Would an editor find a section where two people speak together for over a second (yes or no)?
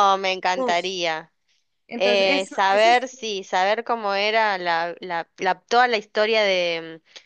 yes